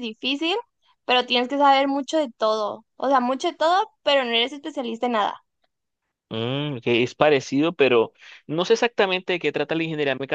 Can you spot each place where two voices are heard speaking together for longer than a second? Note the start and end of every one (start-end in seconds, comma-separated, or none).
none